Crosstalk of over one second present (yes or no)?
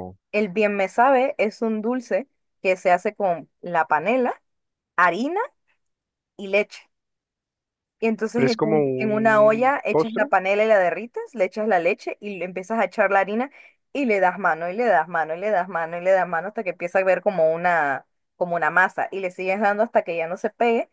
yes